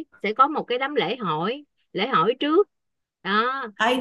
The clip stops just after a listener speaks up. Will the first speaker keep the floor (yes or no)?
no